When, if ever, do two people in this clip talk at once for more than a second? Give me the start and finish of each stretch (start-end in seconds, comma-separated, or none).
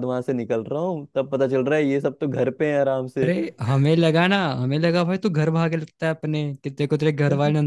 none